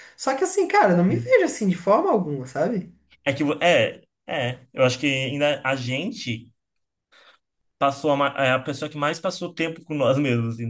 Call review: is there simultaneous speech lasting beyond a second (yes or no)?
no